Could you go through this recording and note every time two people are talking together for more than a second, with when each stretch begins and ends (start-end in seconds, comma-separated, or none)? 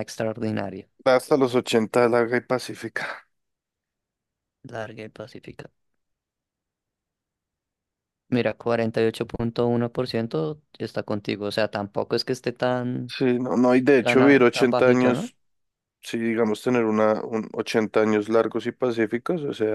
14.0-15.3